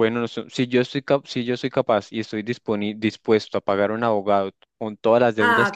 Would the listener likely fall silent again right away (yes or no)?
no